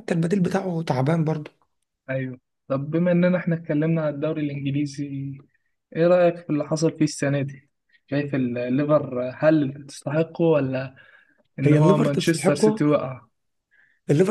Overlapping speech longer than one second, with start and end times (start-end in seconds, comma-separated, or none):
11.6-12.9